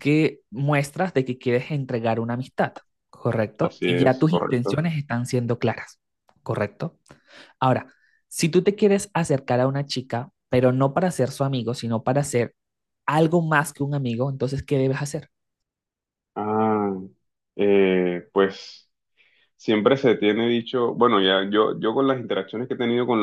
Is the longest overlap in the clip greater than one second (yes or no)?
yes